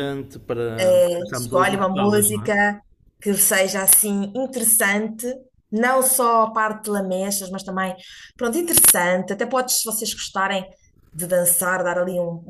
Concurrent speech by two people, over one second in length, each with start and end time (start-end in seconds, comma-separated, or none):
1.3-2.5